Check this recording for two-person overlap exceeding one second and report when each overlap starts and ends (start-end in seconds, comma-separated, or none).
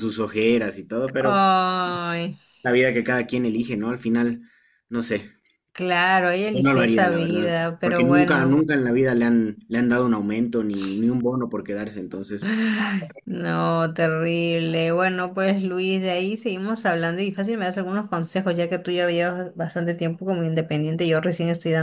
6.5-8.6